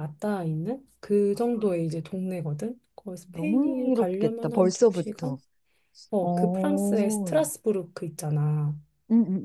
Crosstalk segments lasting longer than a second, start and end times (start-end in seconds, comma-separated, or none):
3.3-5.4, 6.2-7.5